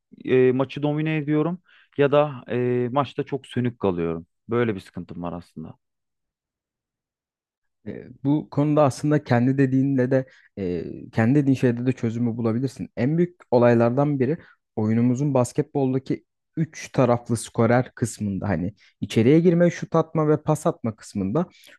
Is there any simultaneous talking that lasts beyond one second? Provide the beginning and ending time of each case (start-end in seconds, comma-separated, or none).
none